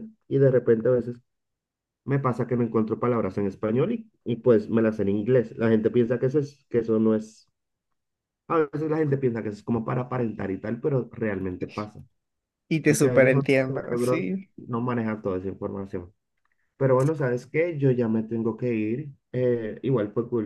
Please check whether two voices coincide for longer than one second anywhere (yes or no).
yes